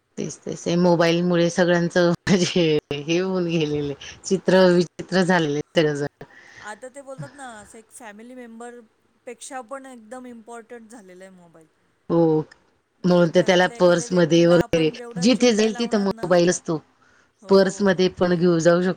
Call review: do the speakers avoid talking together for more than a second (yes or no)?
no